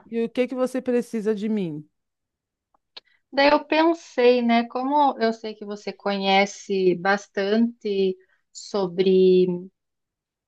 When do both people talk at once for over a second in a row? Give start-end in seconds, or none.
none